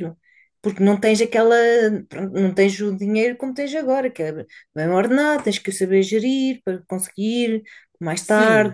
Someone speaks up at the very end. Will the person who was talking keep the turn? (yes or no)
no